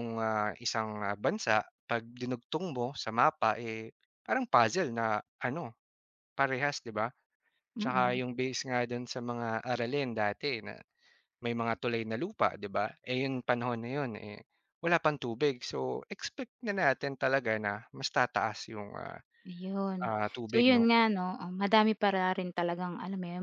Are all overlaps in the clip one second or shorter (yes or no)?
yes